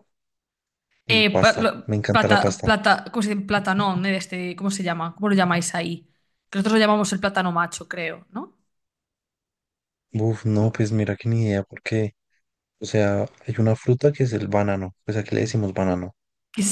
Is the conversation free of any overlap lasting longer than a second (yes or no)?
no